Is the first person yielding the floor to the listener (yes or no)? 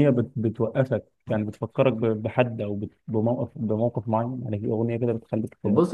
yes